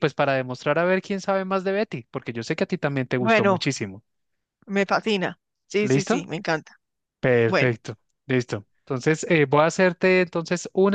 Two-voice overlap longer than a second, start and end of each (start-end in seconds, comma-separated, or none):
none